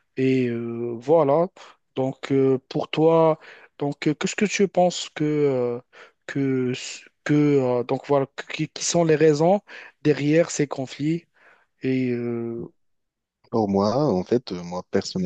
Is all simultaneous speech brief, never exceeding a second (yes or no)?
yes